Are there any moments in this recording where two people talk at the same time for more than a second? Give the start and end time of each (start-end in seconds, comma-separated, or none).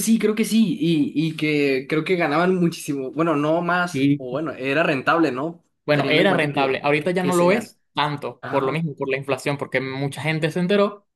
5.8-7.7